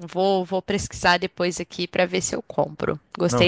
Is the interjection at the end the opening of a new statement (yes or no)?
yes